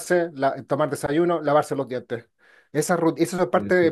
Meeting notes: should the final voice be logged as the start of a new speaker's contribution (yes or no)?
no